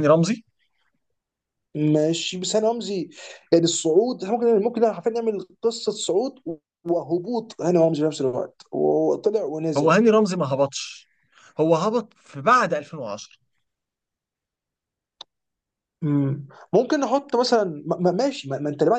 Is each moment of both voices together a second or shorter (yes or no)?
yes